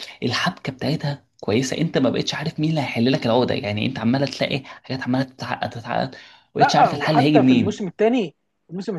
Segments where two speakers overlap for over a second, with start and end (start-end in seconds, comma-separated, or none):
6.6-7.9